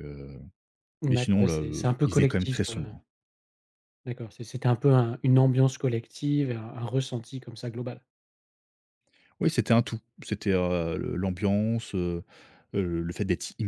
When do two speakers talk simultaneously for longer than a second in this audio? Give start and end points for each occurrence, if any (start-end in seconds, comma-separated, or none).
1.1-3.0